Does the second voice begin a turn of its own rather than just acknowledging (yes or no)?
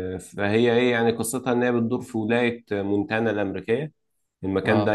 no